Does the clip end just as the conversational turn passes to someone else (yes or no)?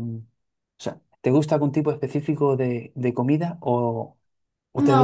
yes